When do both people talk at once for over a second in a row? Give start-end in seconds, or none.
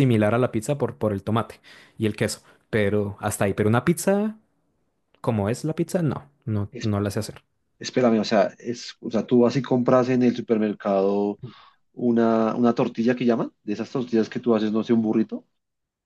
none